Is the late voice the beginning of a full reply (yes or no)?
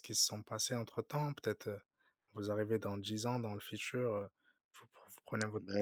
no